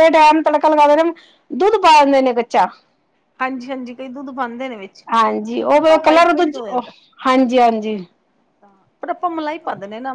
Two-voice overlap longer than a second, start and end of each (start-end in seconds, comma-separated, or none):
5.1-6.8